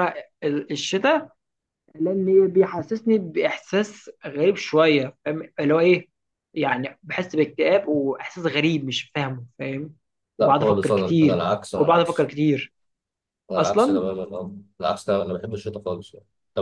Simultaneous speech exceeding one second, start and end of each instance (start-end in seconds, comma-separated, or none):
10.4-12.3